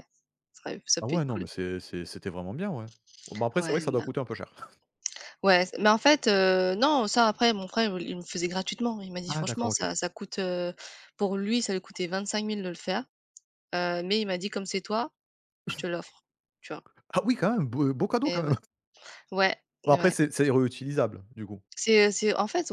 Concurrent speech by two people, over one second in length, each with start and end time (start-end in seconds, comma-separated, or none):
none